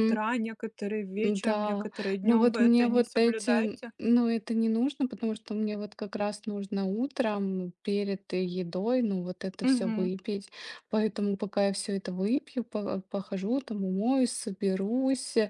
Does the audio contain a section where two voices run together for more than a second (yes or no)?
yes